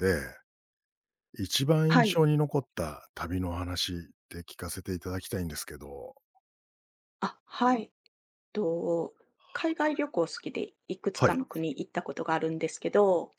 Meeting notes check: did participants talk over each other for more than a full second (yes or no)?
no